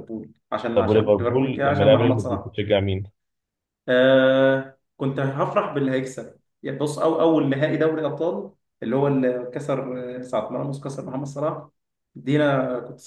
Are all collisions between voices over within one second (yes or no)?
no